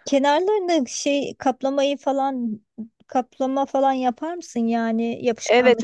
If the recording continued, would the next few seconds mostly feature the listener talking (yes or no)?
yes